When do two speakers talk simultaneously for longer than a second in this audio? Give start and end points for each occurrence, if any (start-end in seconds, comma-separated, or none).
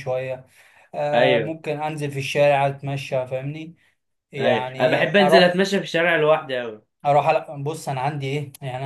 4.4-5.7